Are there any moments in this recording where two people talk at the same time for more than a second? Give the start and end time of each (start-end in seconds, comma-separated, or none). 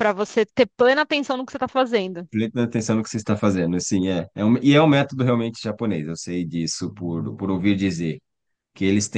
none